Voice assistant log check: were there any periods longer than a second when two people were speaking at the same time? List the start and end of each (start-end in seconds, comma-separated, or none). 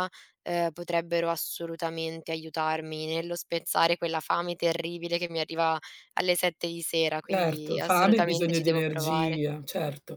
7.2-9.4